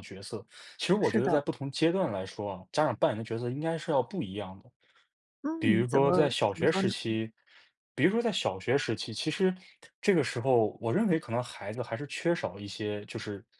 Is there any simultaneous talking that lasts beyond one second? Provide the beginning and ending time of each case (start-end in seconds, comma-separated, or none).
5.6-6.9